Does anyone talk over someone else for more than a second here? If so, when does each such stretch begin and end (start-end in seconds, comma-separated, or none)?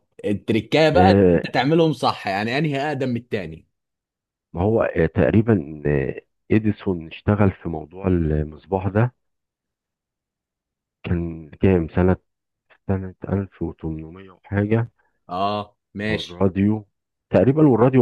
none